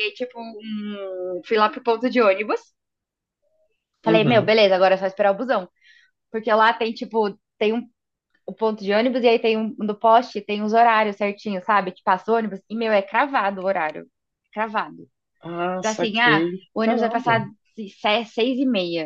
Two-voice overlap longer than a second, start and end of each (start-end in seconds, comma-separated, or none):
15.8-17.4